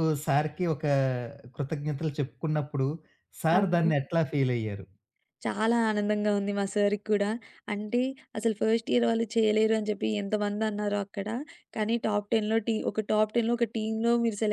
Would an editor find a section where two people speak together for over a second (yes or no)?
no